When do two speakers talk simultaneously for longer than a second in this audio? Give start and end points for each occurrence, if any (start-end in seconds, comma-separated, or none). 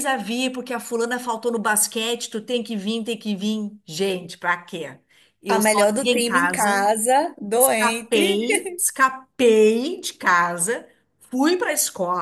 5.5-6.8